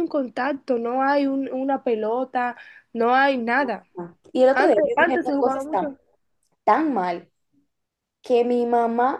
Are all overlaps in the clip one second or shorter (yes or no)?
no